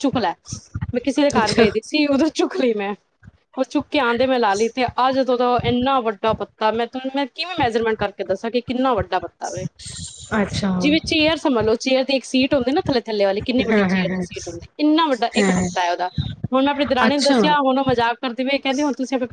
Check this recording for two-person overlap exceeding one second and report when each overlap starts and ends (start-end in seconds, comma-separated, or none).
none